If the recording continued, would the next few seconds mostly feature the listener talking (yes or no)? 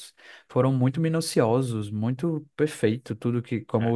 no